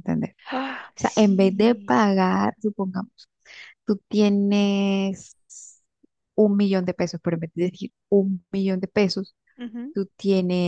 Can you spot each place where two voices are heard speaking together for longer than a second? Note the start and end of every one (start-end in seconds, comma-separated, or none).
0.7-1.9